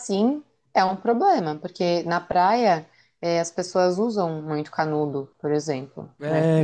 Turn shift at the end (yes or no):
yes